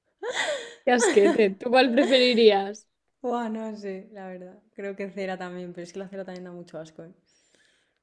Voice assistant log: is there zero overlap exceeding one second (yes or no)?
yes